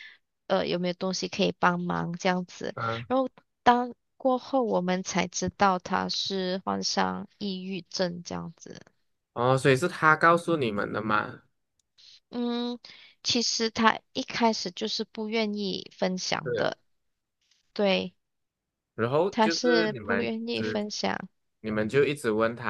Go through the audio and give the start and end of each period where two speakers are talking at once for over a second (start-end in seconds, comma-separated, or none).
19.3-20.8